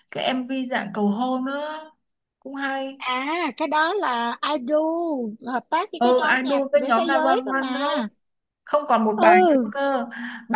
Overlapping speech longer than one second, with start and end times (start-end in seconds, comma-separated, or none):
6.0-7.9